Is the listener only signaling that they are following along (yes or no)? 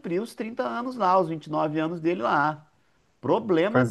yes